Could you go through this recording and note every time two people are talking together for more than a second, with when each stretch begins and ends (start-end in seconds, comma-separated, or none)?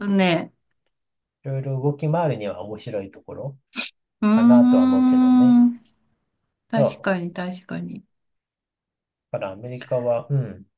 4.3-5.6